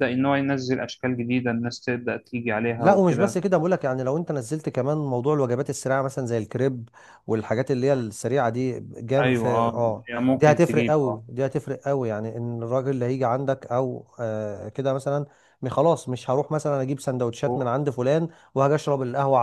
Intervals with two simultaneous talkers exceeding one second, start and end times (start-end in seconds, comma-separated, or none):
9.2-11.2